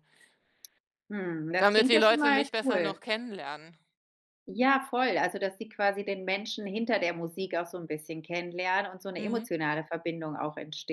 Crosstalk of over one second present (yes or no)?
yes